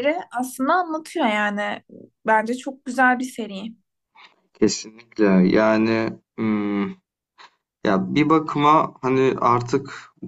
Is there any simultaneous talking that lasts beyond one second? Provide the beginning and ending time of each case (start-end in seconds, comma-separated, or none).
none